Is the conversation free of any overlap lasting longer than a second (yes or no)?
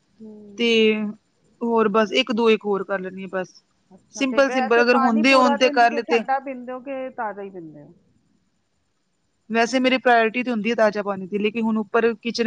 no